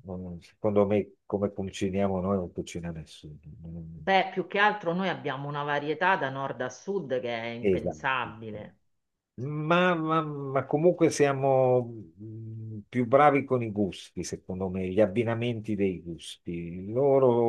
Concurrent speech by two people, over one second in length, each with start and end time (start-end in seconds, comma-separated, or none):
none